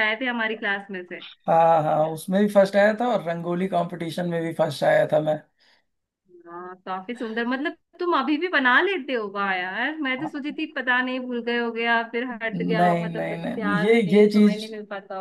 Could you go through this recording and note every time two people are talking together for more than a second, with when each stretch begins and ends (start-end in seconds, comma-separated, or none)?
12.8-14.6